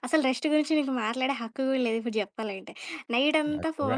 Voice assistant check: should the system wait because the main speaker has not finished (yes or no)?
yes